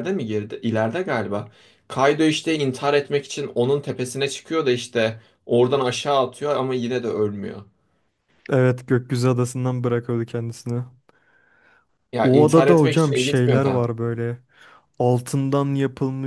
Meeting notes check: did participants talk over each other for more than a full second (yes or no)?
yes